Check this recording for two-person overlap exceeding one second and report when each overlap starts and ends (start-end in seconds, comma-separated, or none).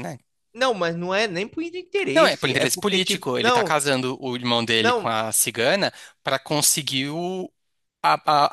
2.1-3.8